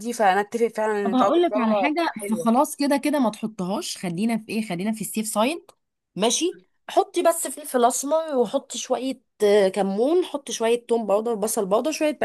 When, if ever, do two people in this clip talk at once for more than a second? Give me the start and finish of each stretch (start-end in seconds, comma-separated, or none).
1.0-2.5